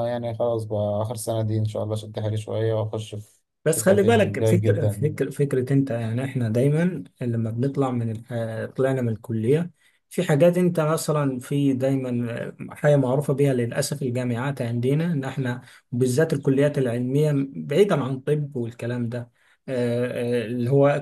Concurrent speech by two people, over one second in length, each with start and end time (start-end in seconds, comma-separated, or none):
3.6-5.2